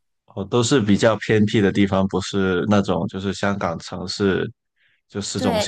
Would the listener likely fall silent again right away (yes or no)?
no